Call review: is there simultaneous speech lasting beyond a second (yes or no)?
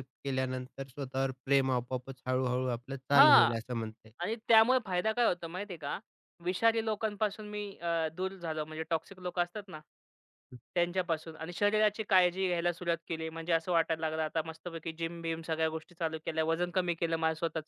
no